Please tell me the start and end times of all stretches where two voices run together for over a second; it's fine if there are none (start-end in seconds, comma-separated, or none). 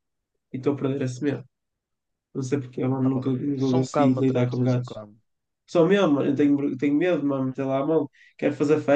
3.0-5.0